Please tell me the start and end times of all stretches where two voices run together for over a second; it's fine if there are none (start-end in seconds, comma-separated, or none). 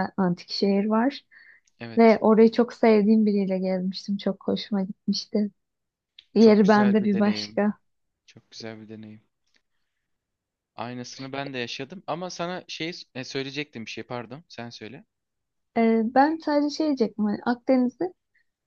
6.4-7.6